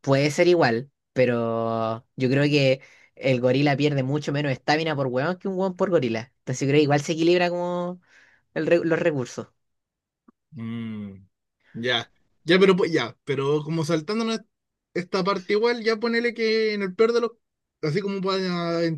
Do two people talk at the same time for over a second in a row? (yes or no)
no